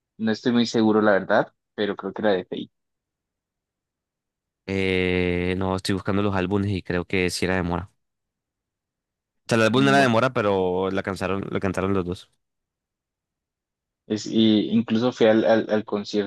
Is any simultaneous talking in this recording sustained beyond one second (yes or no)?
no